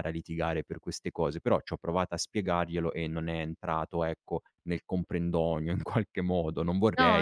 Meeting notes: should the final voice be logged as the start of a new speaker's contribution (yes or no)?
yes